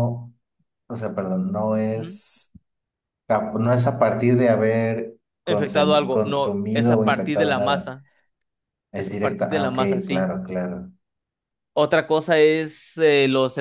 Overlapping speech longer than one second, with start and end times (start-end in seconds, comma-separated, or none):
5.5-7.9, 8.9-10.3